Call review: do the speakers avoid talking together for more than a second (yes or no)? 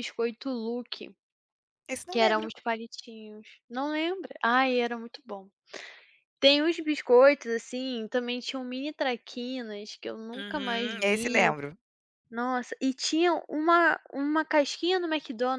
no